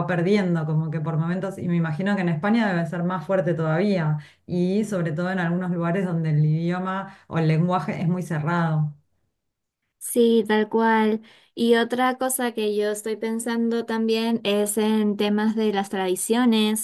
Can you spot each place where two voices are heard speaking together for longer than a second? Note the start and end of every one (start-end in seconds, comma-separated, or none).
none